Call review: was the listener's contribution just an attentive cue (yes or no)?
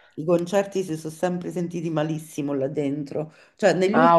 yes